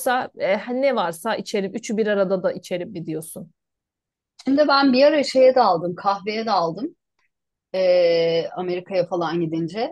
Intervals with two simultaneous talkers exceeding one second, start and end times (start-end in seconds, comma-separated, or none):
none